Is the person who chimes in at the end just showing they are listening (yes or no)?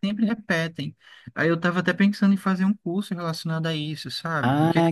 no